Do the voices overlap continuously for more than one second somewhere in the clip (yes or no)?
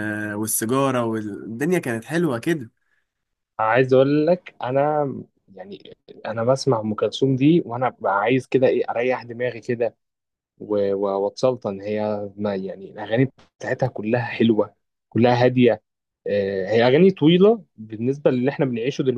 no